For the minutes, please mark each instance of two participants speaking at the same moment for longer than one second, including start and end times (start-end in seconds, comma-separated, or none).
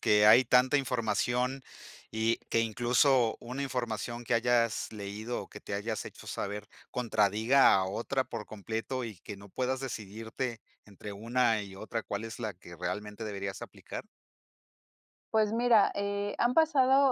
none